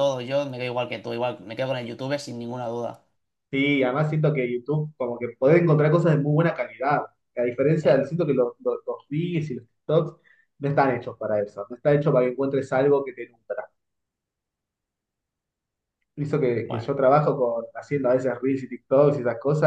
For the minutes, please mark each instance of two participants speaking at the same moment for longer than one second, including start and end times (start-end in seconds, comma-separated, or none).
none